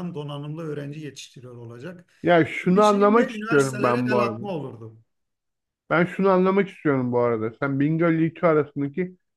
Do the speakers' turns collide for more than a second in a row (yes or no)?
yes